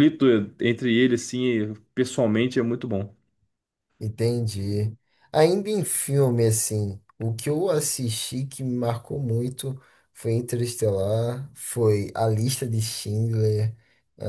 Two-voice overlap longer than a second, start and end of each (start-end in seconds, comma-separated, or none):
none